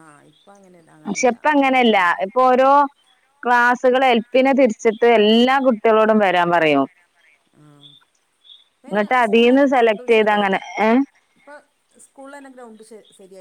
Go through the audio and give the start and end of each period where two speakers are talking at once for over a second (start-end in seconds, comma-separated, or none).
8.9-10.6